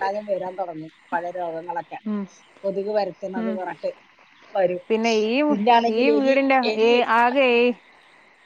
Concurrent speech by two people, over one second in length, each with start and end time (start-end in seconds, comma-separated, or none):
none